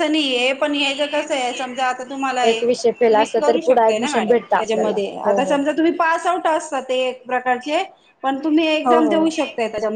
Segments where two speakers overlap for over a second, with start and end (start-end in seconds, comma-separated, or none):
3.1-5.6